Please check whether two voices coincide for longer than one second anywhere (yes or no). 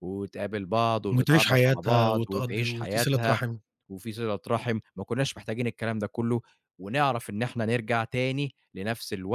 yes